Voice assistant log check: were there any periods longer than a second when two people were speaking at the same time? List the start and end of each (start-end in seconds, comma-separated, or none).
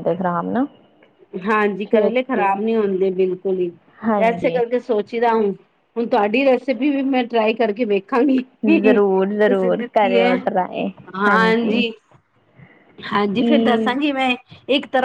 8.8-10.3